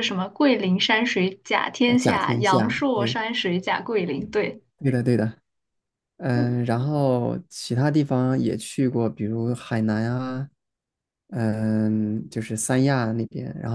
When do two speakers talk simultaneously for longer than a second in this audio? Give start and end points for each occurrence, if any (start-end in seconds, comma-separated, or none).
1.9-3.2